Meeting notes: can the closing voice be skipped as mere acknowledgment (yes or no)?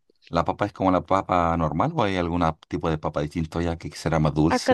no